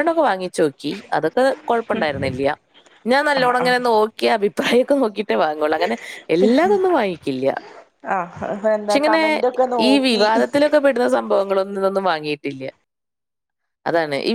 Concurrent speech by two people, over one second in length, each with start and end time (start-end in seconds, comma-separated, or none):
none